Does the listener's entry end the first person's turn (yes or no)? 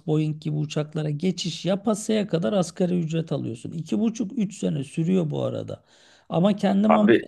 no